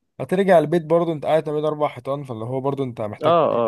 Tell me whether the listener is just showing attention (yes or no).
no